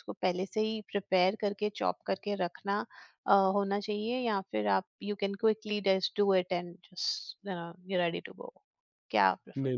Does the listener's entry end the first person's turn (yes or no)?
yes